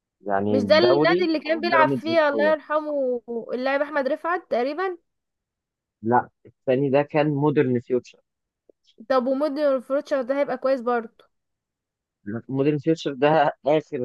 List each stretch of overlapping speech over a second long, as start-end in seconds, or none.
0.5-2.5